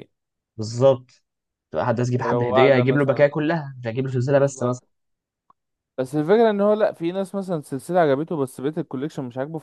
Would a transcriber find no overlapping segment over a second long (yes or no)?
no